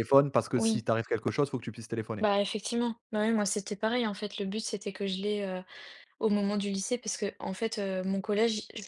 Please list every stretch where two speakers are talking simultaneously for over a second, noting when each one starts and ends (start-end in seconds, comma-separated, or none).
none